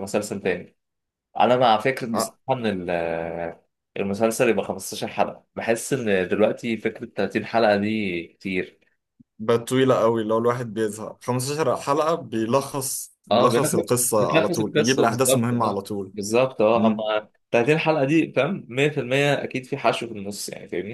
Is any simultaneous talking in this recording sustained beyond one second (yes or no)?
yes